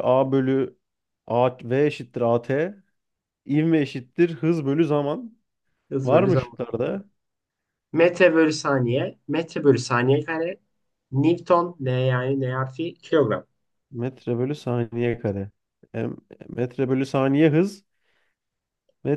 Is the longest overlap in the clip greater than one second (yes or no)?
no